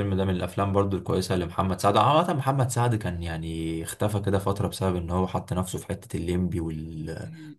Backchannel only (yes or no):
yes